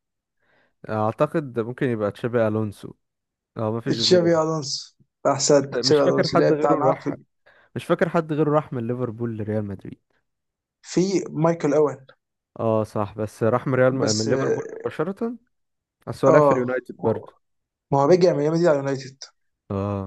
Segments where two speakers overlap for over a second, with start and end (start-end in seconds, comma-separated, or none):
5.7-7.1